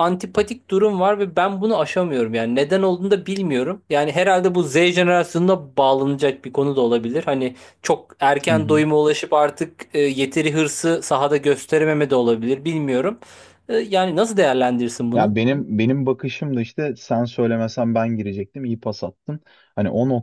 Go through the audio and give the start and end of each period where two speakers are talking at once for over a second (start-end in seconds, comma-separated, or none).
none